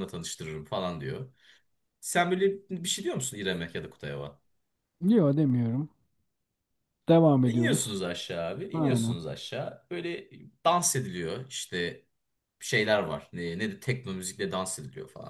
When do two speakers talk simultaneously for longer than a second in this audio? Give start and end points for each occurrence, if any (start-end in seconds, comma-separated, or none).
none